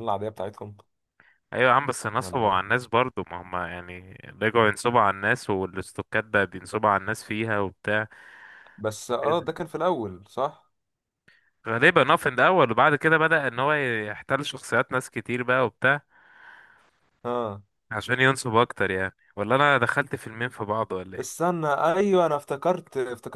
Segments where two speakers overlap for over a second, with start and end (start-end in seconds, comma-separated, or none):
none